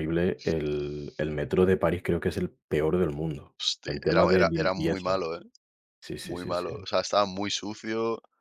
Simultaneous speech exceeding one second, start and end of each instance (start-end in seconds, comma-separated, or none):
3.6-5.2